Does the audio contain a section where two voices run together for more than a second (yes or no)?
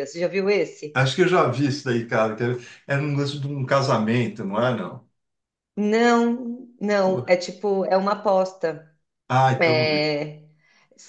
no